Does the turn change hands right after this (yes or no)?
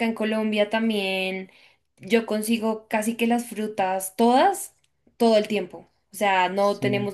no